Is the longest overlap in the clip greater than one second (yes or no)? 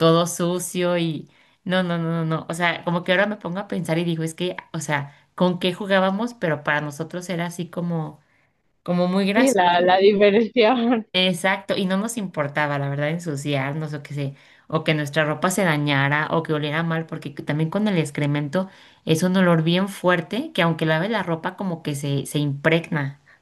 no